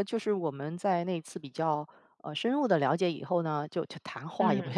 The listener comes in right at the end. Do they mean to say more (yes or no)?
no